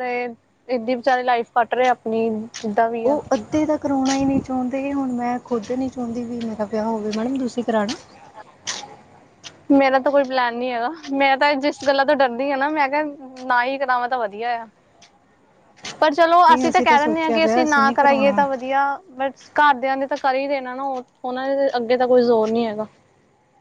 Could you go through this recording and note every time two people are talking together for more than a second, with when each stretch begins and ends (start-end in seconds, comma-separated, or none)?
16.5-18.4